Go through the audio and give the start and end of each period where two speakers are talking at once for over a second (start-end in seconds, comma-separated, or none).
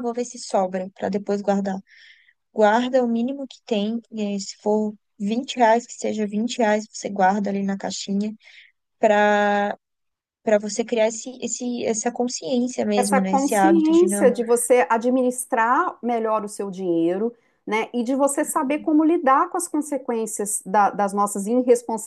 12.9-14.3